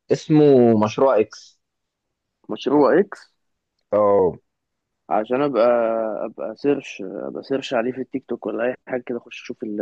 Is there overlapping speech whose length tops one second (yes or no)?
no